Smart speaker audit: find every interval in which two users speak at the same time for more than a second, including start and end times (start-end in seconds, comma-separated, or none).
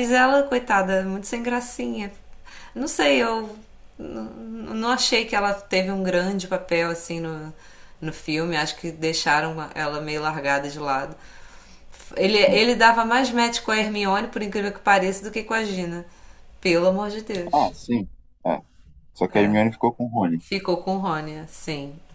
none